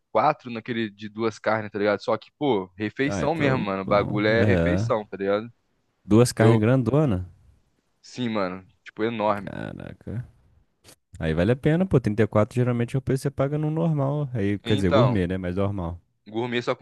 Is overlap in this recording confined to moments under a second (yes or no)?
no